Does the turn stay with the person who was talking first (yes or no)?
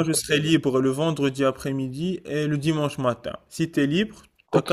no